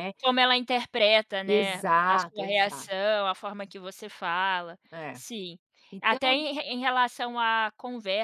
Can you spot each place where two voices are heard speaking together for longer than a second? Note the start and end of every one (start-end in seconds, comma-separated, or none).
1.4-3.0